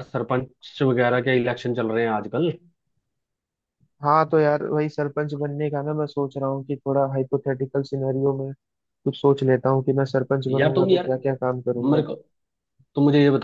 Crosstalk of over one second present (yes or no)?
no